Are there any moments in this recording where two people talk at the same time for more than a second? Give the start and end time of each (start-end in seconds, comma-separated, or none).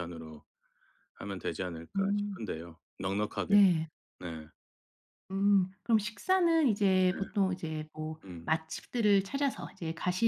none